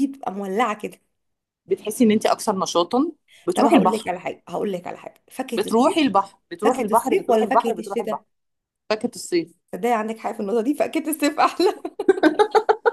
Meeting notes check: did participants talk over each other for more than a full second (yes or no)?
yes